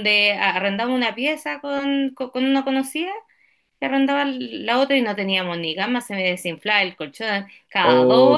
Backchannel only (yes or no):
no